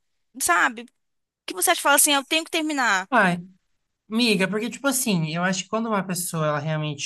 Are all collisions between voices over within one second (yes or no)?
yes